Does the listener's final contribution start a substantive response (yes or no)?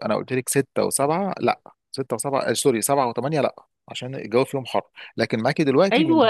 yes